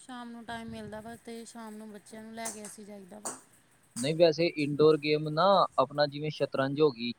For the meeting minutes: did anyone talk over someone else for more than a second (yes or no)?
no